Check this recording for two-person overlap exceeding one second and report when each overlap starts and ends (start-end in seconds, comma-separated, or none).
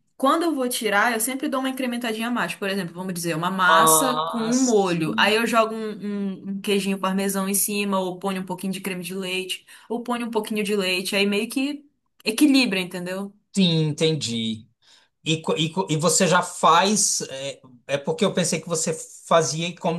3.7-5.3